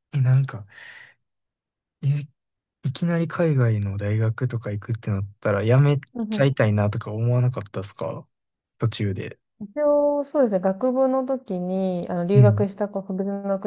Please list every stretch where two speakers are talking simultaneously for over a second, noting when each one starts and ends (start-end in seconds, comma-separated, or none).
none